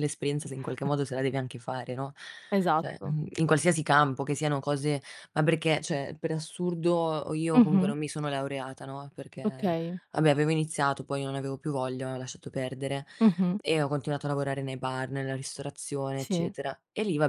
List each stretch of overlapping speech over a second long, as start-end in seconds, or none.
none